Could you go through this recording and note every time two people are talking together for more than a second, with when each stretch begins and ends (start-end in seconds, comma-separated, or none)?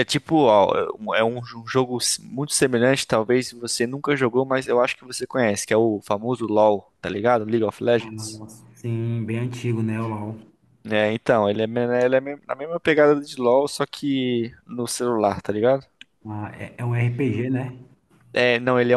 none